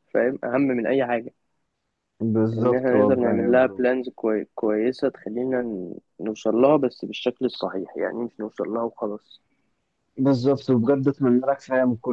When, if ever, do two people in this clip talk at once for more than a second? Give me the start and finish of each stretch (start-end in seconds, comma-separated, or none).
2.6-3.9